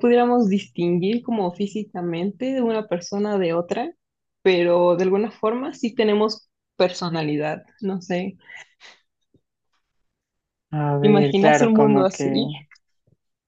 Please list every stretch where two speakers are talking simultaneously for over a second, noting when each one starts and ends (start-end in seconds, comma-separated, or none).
11.0-12.2